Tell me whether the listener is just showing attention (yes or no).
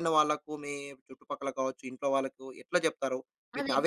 no